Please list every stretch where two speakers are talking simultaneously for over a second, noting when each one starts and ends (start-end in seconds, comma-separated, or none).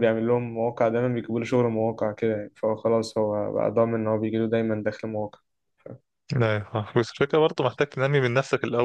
none